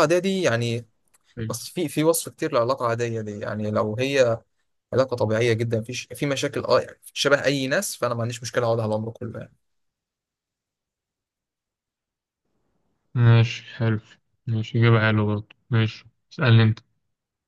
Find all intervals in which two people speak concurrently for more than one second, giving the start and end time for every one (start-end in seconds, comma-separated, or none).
none